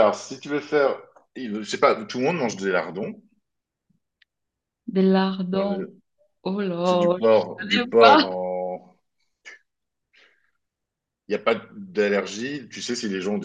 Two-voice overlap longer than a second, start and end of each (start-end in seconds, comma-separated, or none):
6.8-8.3